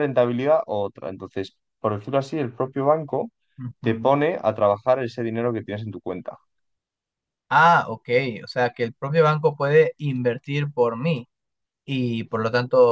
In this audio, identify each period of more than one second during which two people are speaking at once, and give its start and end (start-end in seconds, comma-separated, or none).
none